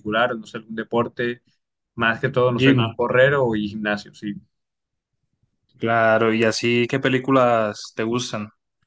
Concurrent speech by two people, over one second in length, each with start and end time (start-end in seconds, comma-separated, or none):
none